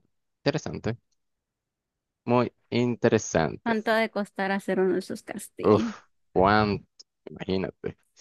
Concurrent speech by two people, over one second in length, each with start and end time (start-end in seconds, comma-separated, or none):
none